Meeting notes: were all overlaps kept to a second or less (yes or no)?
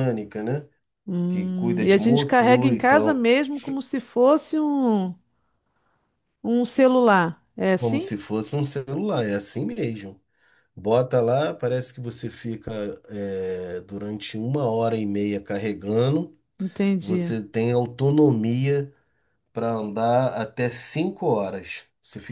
no